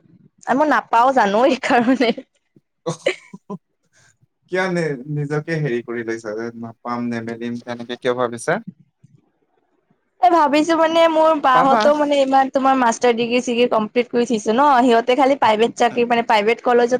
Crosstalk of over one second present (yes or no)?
no